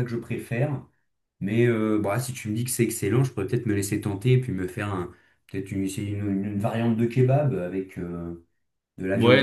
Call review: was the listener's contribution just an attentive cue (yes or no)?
no